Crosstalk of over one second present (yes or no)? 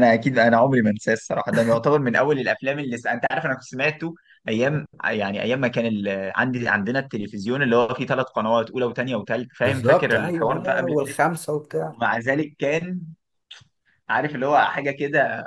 yes